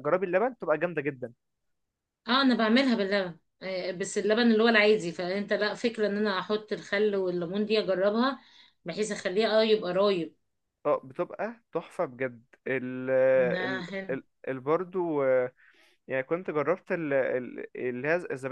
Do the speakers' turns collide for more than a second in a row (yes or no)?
no